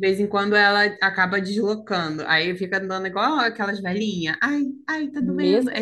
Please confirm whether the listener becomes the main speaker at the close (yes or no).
yes